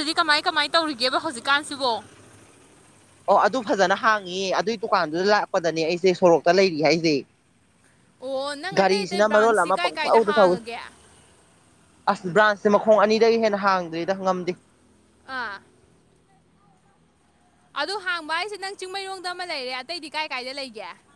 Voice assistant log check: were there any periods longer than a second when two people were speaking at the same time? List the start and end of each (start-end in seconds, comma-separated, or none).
8.8-10.6